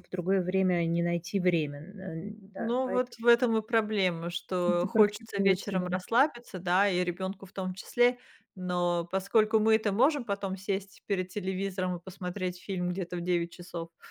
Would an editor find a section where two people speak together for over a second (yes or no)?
yes